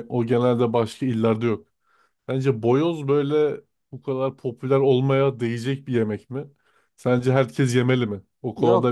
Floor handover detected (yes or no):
yes